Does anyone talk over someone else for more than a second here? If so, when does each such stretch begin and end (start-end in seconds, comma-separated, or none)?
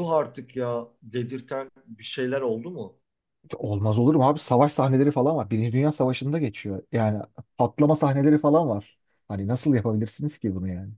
none